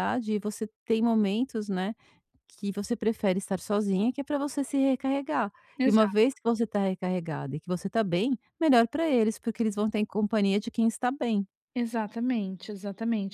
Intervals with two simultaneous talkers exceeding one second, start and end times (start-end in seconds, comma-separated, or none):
none